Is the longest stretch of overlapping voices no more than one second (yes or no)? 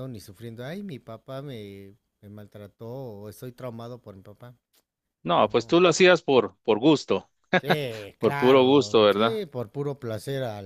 no